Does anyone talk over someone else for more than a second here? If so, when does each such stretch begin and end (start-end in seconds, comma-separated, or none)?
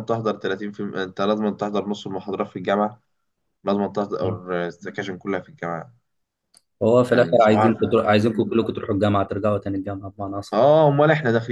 7.1-8.7